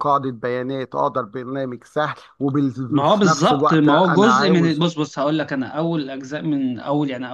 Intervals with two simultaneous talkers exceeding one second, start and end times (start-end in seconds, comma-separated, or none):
2.9-4.8